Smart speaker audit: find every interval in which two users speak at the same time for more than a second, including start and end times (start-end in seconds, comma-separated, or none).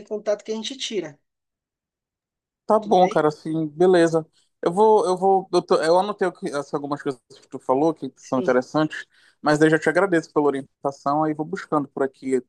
none